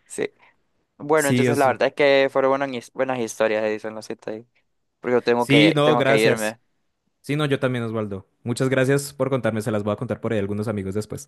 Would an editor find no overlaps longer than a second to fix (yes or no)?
no